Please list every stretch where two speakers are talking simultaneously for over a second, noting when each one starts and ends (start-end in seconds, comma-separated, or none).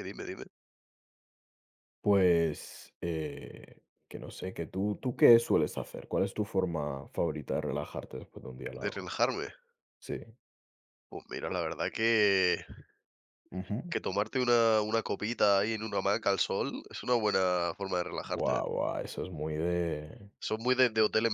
none